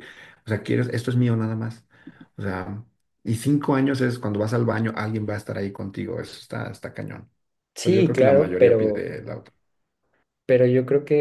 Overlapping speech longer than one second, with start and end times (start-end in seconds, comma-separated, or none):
7.8-9.1